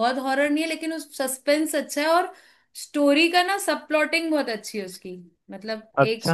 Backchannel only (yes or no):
yes